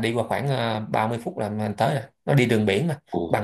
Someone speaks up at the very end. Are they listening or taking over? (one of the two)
taking over